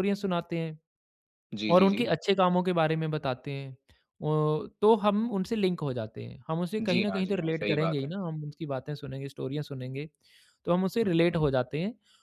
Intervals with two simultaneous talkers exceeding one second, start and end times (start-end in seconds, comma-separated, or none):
6.8-8.1